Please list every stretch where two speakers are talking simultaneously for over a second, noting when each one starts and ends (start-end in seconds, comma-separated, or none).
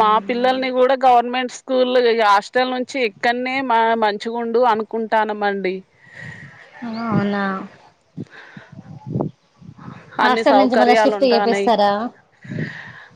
10.2-11.7